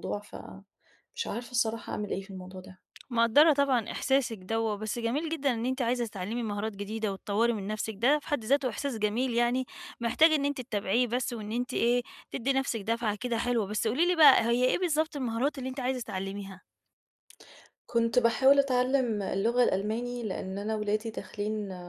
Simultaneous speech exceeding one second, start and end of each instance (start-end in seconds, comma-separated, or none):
none